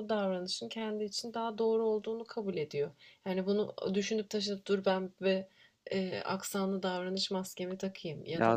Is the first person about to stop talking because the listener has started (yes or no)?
no